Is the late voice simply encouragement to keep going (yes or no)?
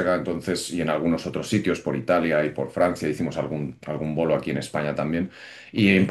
yes